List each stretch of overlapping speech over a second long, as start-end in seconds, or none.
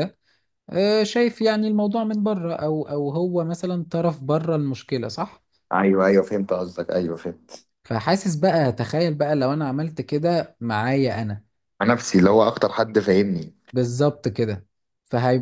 none